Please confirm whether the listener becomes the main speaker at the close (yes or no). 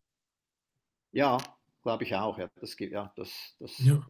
no